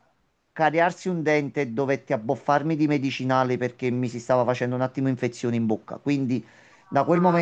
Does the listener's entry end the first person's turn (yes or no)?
no